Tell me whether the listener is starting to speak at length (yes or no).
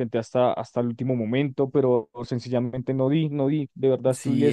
yes